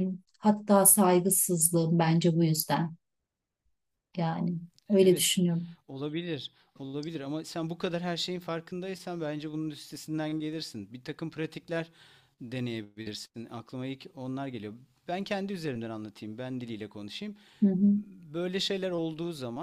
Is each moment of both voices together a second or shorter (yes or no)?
yes